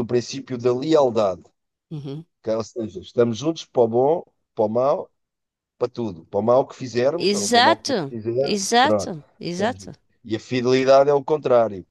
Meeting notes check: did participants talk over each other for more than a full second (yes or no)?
yes